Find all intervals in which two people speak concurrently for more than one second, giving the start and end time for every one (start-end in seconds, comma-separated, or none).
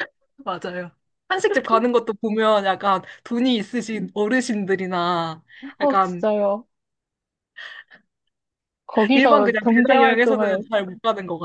9.1-10.7